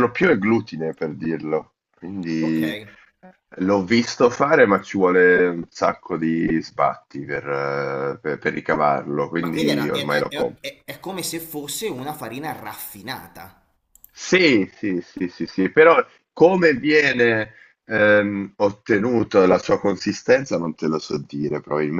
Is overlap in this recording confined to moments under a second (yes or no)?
no